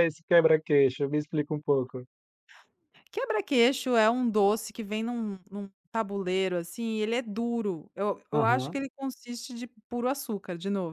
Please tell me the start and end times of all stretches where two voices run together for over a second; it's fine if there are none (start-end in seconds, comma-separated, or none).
none